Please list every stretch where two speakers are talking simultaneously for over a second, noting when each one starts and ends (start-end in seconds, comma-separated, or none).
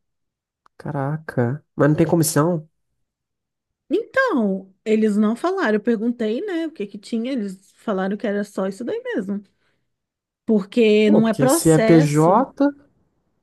11.0-12.4